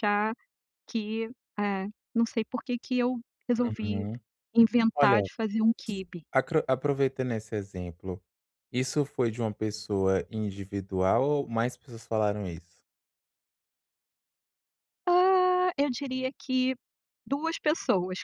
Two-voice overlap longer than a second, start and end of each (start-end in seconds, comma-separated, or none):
none